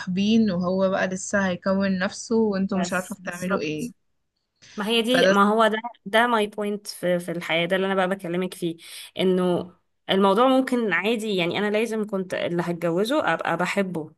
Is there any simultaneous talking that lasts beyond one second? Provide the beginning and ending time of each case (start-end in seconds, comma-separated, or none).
2.5-3.9